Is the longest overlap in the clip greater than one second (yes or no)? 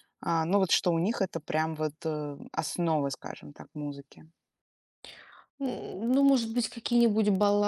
no